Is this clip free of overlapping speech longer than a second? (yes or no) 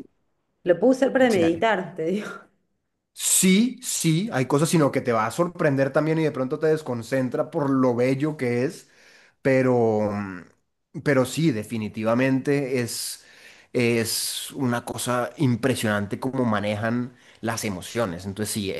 yes